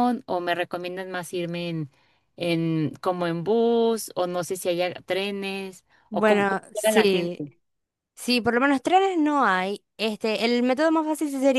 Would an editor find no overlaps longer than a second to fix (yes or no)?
no